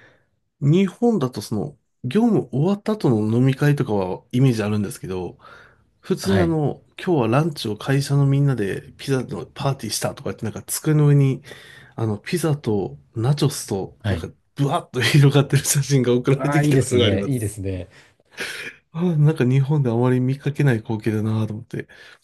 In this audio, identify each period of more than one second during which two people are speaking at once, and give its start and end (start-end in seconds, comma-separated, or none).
16.4-17.6